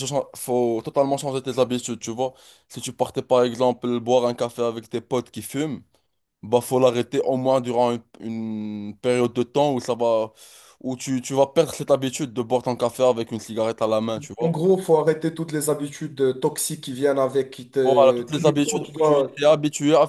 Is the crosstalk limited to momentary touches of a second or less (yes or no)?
no